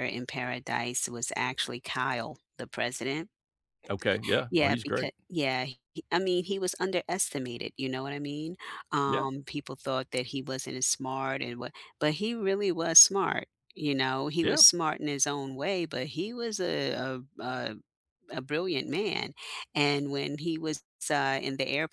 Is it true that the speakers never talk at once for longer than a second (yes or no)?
yes